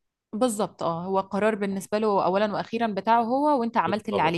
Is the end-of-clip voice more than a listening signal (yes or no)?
yes